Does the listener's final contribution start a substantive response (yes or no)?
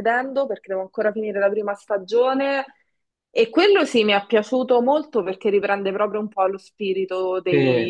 yes